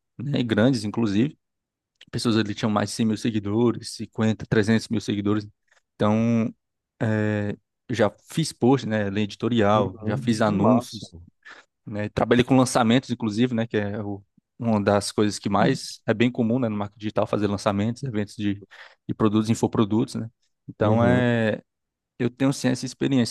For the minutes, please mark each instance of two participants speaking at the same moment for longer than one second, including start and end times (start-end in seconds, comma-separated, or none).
9.7-11.1